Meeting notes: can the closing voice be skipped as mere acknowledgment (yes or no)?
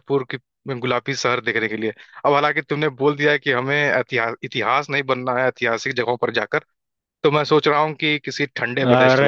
no